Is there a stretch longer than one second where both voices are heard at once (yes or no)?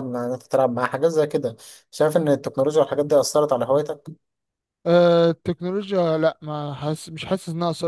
no